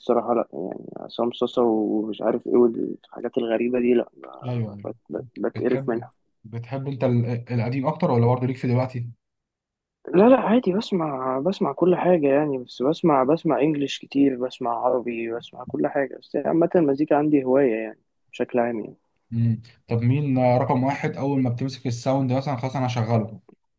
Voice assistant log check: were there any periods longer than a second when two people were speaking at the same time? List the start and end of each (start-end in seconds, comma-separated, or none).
none